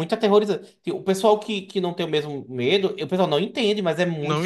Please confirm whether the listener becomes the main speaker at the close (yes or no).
yes